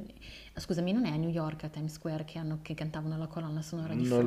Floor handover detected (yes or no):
yes